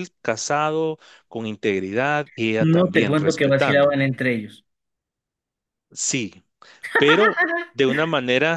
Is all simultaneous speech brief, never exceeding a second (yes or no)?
no